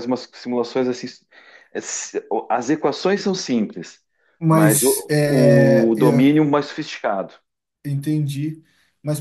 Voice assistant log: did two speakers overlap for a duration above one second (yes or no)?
yes